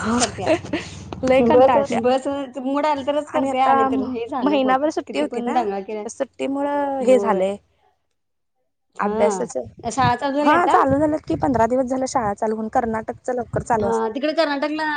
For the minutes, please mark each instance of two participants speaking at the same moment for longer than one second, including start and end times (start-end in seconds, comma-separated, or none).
3.3-6.0